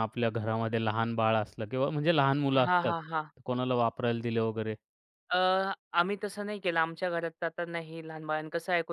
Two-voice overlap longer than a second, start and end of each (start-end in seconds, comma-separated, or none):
none